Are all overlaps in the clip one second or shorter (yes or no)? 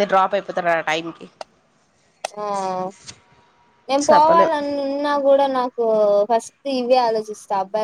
yes